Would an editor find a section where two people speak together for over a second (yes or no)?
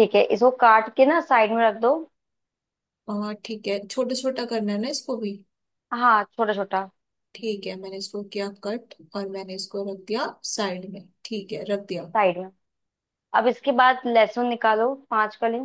no